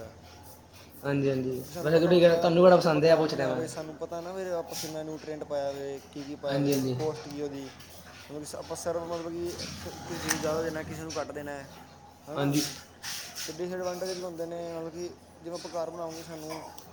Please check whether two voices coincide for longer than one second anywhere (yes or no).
yes